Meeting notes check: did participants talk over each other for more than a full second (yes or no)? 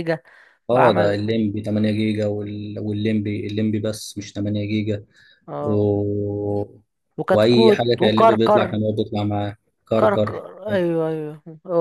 yes